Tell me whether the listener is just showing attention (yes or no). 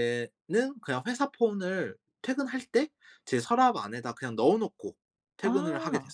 no